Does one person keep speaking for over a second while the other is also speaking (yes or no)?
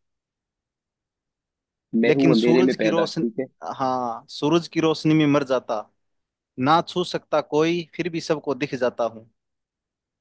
yes